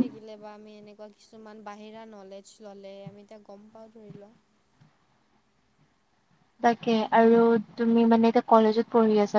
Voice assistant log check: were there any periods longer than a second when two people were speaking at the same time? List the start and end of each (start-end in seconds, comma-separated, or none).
none